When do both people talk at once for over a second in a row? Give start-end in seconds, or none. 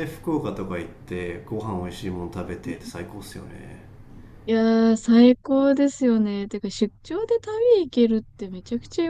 none